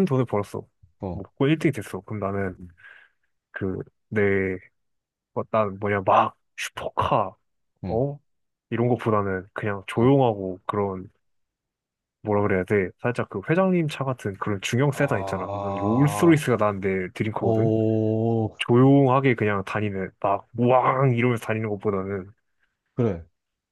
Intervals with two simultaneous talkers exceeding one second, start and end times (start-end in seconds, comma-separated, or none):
14.9-16.4